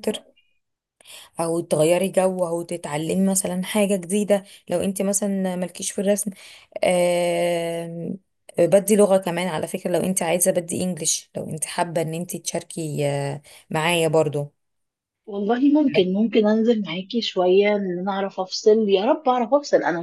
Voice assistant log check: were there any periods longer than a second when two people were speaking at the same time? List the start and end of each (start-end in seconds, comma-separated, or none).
none